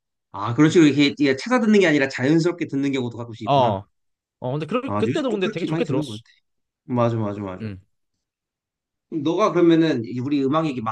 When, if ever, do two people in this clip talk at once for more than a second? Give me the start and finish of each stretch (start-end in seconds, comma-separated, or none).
4.8-6.2